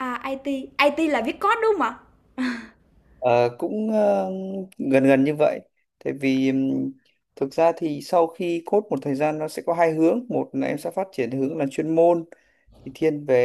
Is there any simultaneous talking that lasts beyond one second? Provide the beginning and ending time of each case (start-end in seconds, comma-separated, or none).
none